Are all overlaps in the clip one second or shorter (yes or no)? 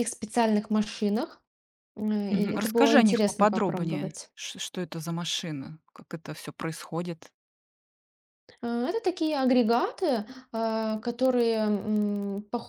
no